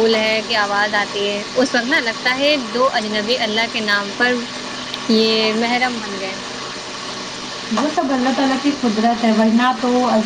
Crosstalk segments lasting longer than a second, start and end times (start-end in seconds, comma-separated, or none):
none